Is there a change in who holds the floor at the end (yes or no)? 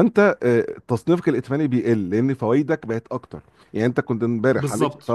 no